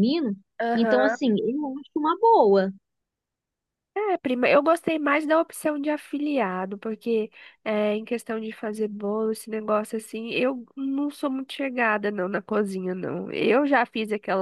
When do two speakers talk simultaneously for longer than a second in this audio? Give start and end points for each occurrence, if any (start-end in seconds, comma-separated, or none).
none